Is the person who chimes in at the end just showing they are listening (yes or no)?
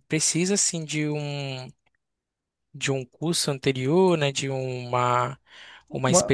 yes